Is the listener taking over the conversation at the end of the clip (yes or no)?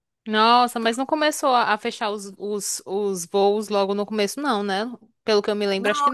yes